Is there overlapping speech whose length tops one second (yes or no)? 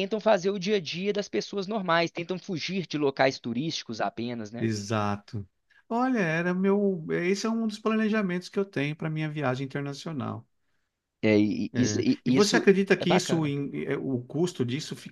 yes